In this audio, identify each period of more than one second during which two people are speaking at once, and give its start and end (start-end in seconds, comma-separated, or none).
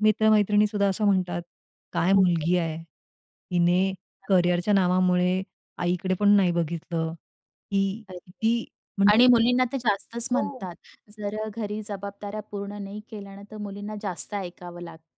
none